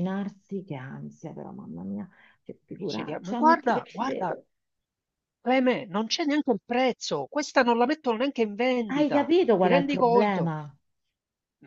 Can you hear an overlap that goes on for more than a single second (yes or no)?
yes